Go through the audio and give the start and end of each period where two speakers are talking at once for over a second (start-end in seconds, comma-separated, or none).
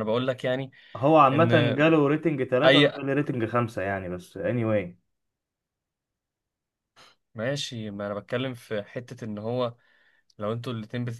none